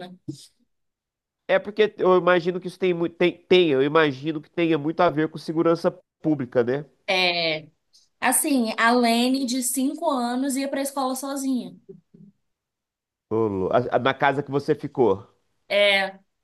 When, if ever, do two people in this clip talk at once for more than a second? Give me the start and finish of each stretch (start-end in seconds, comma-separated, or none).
none